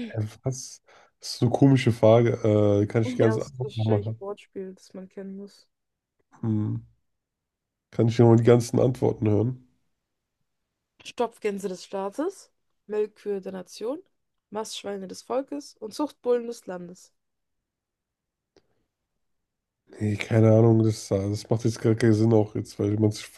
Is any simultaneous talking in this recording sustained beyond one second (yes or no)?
yes